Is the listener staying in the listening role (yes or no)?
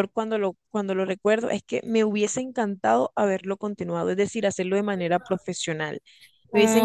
yes